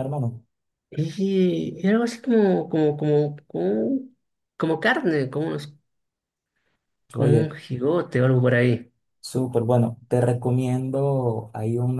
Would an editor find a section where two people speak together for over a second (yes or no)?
no